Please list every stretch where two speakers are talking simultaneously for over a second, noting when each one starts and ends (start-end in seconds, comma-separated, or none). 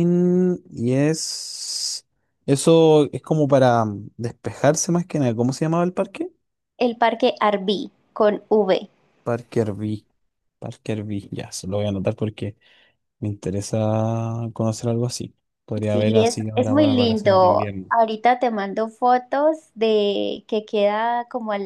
15.9-17.9